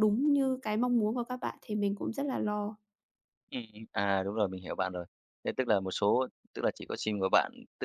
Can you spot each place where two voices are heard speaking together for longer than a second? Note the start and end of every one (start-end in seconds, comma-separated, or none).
none